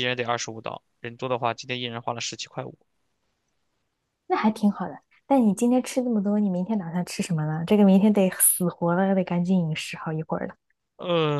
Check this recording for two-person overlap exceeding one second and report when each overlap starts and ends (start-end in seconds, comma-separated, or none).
none